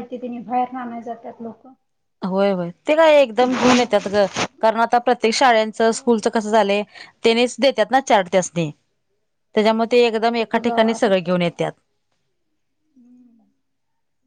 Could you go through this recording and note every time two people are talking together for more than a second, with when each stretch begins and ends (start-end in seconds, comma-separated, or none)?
9.8-11.6